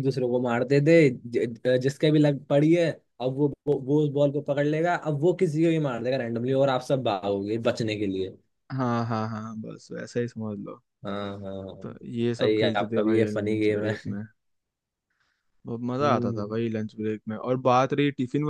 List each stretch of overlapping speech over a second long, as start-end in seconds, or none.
12.4-14.2